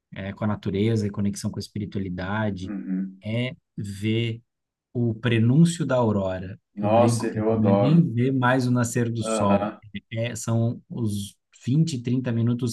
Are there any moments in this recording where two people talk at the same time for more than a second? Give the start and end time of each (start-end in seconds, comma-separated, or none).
6.8-8.1